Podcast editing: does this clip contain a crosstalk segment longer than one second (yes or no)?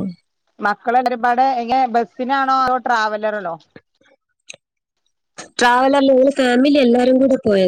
no